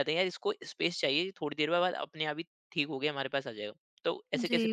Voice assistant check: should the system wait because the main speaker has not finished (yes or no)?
no